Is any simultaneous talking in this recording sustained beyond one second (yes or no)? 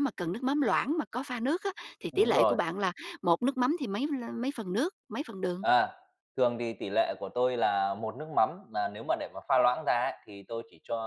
no